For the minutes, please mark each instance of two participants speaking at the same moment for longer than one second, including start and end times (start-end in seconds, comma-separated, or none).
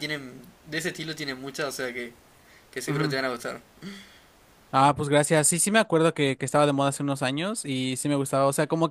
none